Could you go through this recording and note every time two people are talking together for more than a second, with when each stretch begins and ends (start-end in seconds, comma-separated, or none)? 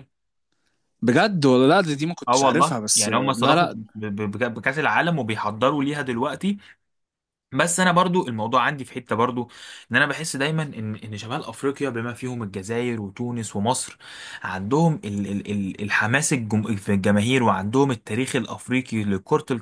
2.3-3.8